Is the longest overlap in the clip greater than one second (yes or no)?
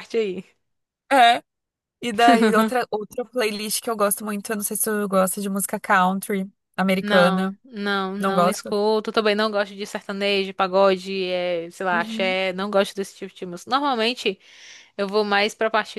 no